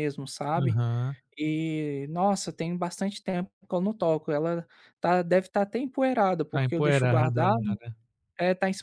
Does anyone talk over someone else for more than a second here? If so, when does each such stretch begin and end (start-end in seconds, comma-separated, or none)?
6.5-7.8